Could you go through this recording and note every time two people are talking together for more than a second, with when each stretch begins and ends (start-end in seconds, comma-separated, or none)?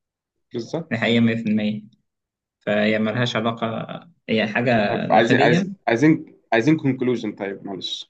none